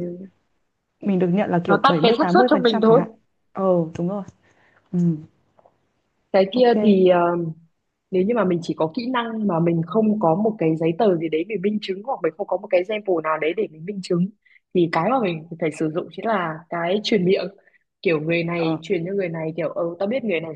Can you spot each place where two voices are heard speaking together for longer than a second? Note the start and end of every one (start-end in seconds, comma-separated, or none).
1.7-3.0